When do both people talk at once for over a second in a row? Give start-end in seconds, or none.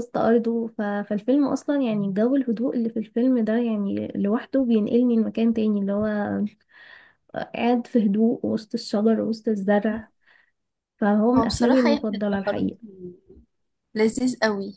11.4-12.7